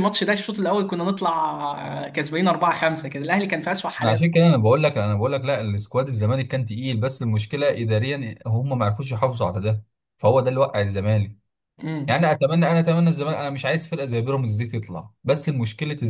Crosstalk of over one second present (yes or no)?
no